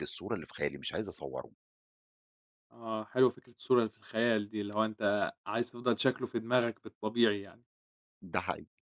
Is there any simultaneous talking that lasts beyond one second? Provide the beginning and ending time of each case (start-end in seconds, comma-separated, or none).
none